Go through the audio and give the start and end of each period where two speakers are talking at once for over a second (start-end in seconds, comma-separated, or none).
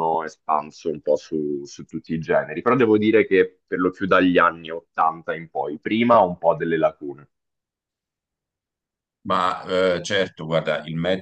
none